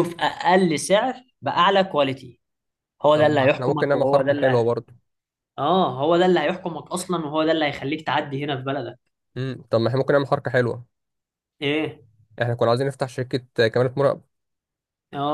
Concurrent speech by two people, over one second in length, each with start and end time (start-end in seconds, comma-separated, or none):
3.1-4.7